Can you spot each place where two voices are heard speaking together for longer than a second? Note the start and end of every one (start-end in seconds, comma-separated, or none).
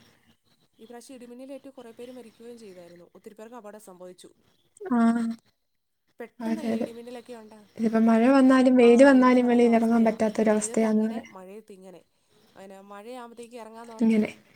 none